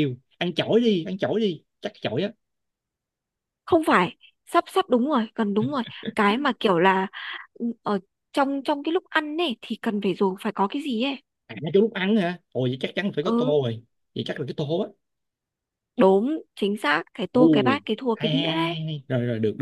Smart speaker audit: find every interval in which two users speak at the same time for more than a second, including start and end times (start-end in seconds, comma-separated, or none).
17.3-18.8